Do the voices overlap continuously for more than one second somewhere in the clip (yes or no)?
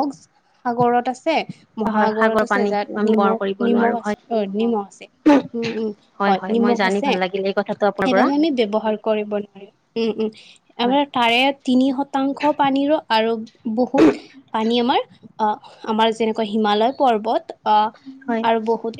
yes